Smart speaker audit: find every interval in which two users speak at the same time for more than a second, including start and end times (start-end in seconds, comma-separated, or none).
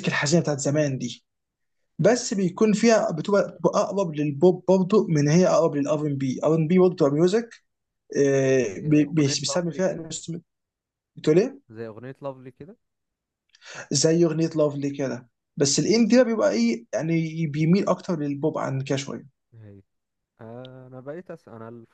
8.8-10.1